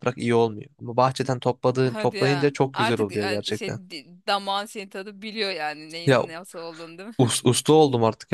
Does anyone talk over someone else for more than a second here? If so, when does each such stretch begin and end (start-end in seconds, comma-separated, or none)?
1.8-3.8